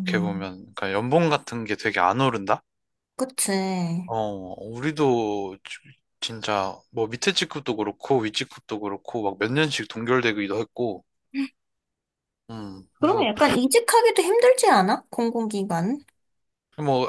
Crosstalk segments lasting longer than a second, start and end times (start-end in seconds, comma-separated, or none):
none